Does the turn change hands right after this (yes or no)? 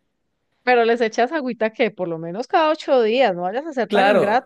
yes